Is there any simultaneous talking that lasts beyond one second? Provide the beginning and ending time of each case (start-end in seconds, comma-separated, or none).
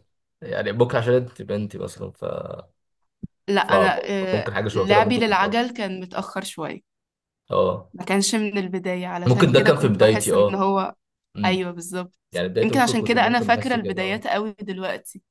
4.3-5.6, 9.3-10.7, 12.6-14.3